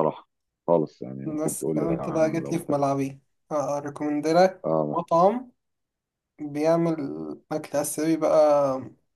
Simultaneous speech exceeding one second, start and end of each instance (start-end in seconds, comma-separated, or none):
1.2-2.7